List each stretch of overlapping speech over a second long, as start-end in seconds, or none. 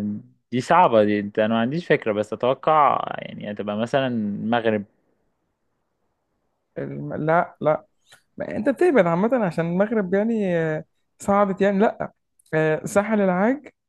none